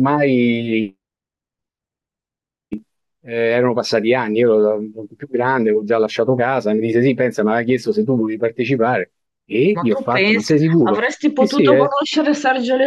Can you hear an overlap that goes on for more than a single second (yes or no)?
yes